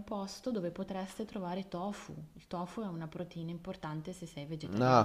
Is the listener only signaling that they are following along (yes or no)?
no